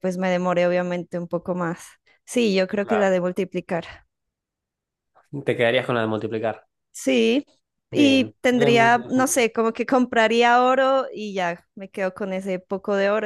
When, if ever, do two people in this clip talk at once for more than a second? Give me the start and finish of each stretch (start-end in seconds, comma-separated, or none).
7.9-9.4